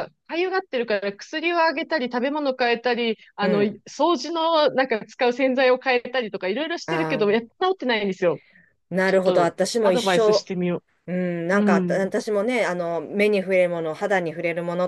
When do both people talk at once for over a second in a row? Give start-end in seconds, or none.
9.0-10.4